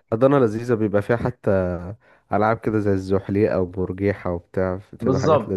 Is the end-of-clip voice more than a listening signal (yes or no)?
yes